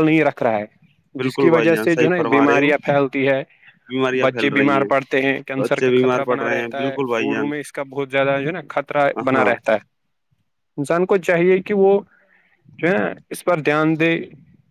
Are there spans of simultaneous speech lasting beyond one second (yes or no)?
yes